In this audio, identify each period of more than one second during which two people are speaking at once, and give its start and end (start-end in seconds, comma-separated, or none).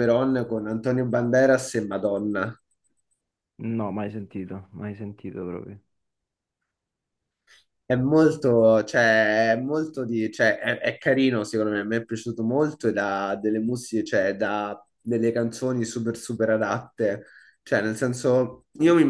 none